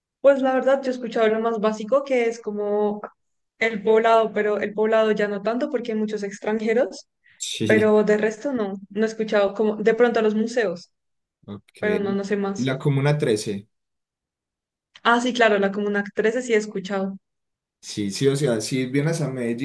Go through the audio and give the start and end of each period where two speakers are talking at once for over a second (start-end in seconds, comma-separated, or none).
none